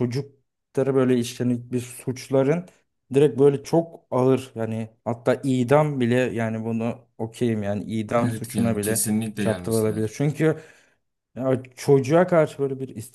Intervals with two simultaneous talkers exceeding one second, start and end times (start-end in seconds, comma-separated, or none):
8.2-10.1